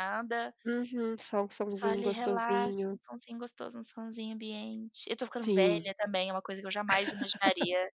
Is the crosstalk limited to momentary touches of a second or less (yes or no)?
no